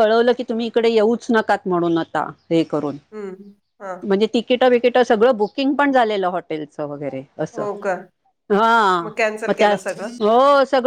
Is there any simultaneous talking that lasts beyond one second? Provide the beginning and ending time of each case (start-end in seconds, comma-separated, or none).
none